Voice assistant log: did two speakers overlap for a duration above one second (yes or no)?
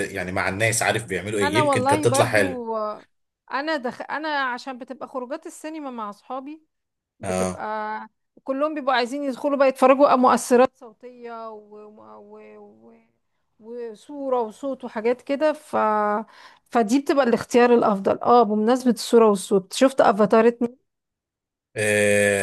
yes